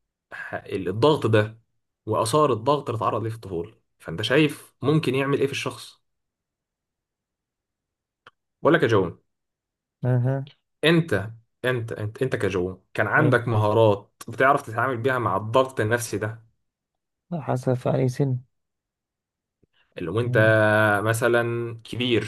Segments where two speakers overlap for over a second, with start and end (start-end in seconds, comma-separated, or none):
none